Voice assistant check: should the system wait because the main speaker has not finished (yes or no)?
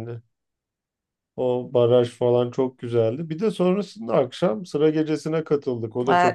no